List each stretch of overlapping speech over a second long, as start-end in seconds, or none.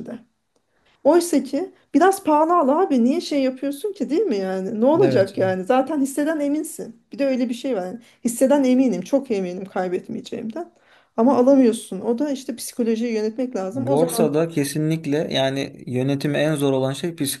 none